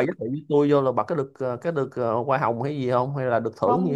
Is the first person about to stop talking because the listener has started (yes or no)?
yes